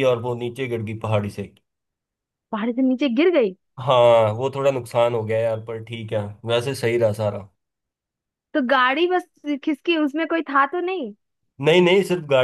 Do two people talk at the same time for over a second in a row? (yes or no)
no